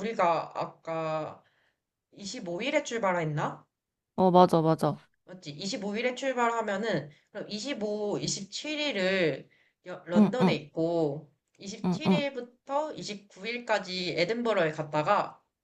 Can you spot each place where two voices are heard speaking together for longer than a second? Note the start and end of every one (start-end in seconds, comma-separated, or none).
none